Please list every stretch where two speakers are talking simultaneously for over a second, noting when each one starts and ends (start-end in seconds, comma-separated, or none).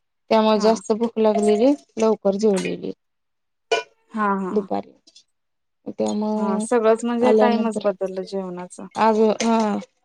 6.4-7.9